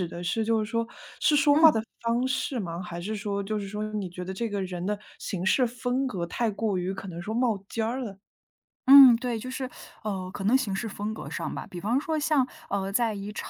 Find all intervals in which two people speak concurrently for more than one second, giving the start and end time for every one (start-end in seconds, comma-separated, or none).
none